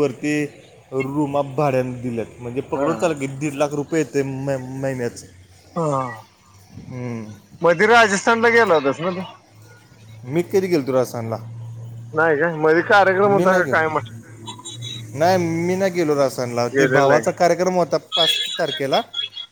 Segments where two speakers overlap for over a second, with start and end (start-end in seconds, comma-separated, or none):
none